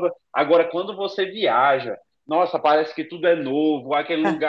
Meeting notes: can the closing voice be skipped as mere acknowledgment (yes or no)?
yes